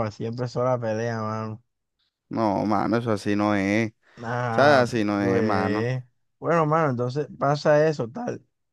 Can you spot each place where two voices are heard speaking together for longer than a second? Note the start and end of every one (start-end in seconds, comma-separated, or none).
4.5-5.9